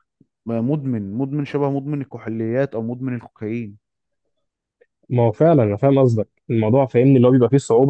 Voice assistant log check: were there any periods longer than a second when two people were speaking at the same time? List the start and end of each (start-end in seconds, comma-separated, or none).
none